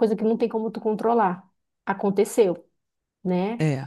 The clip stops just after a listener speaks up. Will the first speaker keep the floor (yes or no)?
yes